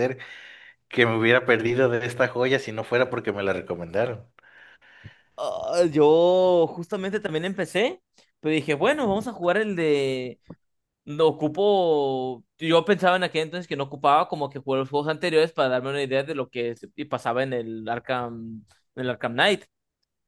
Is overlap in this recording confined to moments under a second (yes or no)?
yes